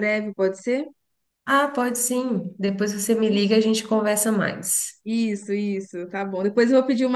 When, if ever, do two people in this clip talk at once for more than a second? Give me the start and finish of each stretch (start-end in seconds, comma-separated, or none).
none